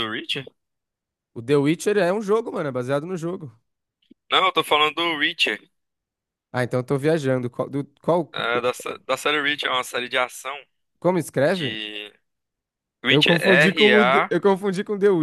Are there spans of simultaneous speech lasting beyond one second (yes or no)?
yes